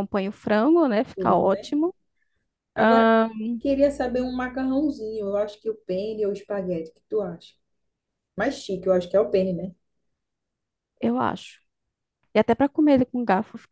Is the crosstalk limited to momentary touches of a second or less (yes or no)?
yes